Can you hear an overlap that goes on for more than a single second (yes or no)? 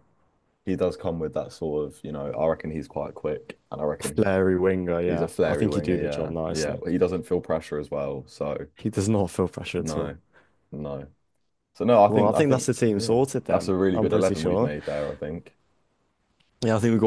yes